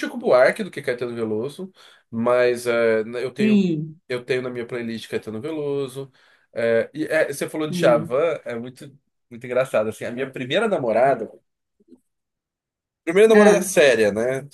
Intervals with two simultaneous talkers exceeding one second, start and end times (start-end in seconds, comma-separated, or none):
none